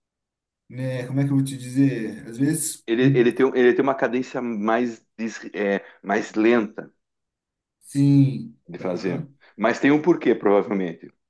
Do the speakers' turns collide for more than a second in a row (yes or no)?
no